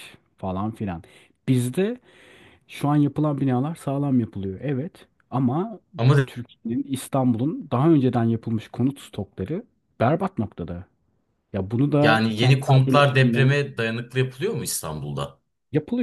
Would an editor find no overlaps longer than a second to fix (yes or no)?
no